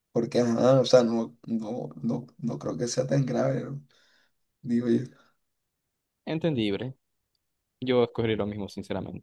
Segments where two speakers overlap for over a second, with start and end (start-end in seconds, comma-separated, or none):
none